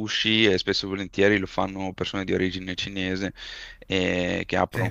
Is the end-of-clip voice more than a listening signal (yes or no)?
no